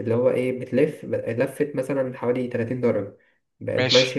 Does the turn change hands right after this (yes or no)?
no